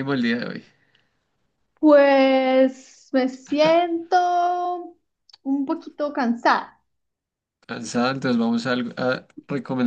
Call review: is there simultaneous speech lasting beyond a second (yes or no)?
no